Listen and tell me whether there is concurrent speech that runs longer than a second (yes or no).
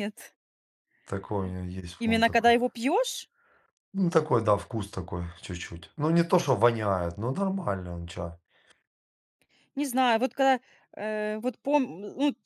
no